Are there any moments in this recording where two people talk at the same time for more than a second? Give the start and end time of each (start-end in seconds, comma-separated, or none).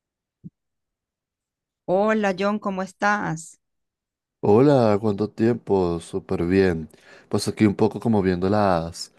none